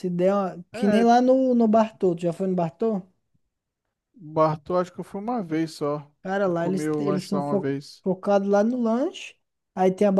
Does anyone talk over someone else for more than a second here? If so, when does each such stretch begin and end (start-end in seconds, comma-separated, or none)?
6.5-8.0